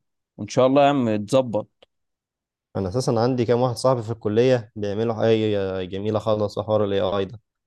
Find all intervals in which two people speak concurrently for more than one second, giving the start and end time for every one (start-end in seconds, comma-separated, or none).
none